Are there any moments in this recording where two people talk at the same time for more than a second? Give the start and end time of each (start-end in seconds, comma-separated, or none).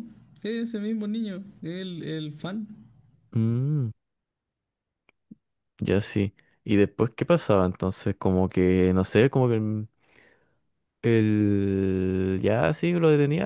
none